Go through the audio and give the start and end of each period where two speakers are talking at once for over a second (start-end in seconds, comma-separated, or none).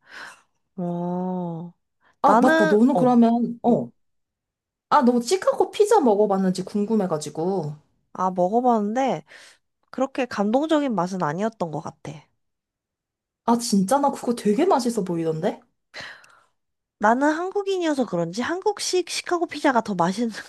2.2-3.8